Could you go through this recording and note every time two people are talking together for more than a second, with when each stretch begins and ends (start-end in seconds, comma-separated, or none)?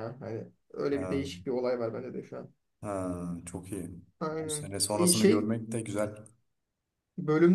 4.3-5.5